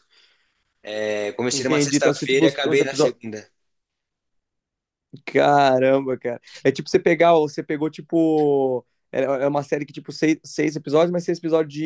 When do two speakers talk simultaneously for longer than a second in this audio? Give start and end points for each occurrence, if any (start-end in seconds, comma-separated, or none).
1.5-3.2